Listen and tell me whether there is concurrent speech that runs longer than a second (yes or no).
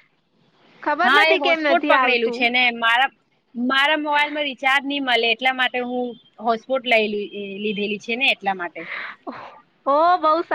yes